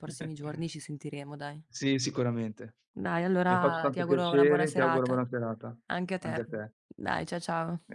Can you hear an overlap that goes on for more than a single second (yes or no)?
yes